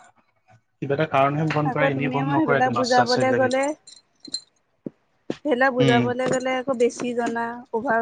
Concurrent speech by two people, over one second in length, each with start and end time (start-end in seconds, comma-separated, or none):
1.7-3.5